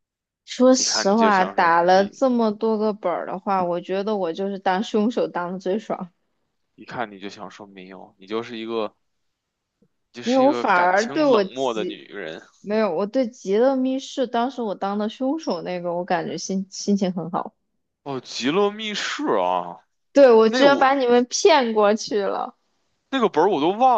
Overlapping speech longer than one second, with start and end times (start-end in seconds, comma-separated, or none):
0.8-2.2, 10.2-12.0